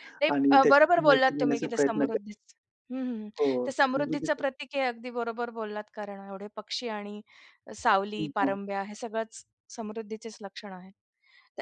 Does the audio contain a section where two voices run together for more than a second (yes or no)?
yes